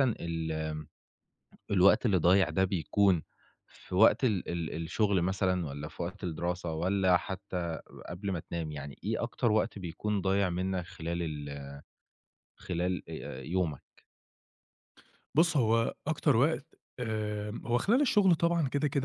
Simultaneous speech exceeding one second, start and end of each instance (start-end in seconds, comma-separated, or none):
none